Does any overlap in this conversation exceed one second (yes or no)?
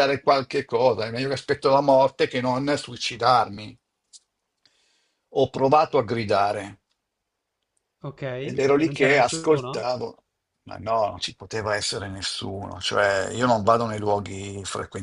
yes